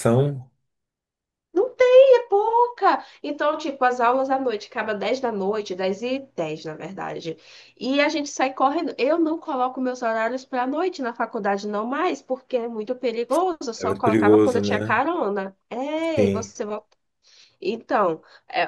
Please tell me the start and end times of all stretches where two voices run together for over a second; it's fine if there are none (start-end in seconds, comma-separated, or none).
13.8-15.0